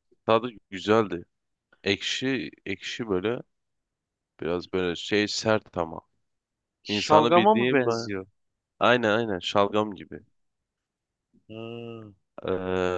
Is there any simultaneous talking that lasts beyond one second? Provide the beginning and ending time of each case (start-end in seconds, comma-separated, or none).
6.9-8.1